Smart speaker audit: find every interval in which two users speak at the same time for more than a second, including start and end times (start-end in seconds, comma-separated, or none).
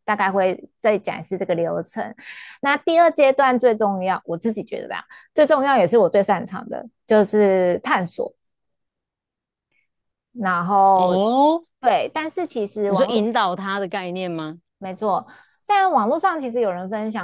none